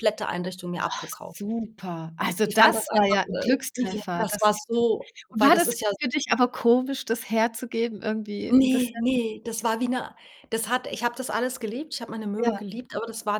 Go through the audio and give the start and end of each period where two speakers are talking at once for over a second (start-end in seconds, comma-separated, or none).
2.4-4.6